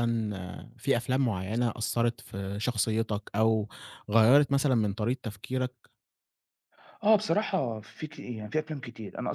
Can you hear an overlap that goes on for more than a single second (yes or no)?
no